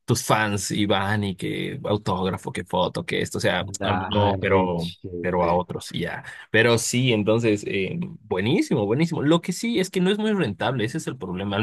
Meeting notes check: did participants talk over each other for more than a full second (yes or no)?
yes